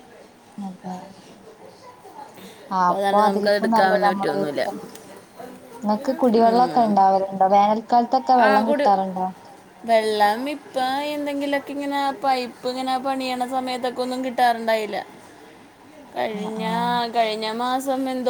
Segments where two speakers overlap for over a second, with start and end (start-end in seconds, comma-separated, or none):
2.8-4.6